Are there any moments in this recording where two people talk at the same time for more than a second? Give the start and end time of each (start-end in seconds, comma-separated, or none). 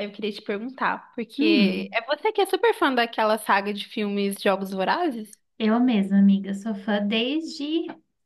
none